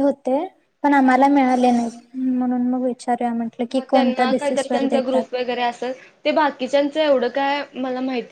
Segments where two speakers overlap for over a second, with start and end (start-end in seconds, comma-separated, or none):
3.8-5.2